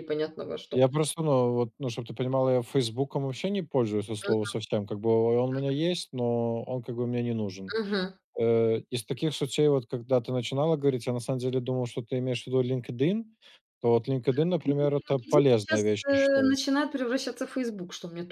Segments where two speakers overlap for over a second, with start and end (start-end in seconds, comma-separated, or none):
14.6-16.6